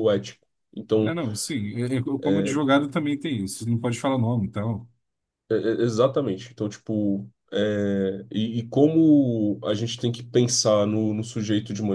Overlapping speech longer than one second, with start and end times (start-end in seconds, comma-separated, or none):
none